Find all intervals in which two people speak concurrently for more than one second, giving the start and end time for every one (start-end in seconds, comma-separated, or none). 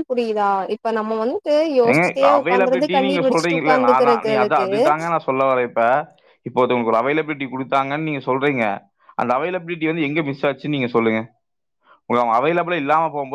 1.9-4.7